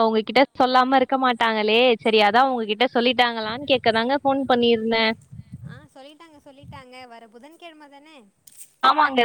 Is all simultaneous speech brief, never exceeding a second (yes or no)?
yes